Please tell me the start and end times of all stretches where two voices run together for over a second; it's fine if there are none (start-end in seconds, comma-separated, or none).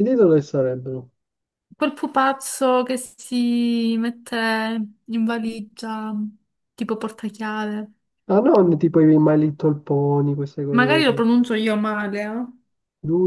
none